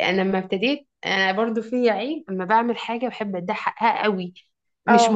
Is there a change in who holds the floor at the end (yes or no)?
no